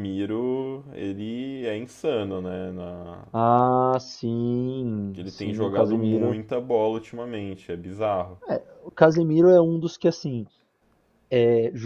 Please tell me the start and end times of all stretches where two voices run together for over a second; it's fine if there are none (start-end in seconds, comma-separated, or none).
5.2-6.4